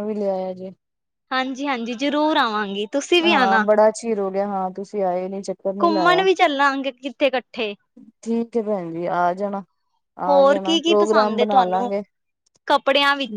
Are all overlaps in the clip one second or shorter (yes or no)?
no